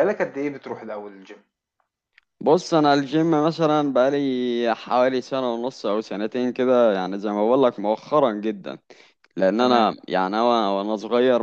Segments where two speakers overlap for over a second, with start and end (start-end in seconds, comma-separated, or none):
none